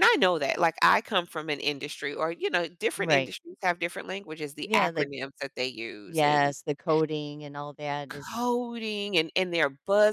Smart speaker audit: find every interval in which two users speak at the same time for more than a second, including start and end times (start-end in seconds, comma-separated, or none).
none